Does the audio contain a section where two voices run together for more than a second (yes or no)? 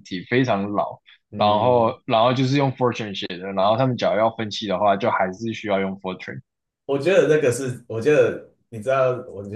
no